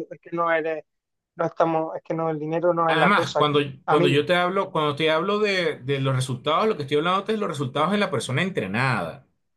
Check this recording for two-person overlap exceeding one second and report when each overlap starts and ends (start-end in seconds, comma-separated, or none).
2.9-4.3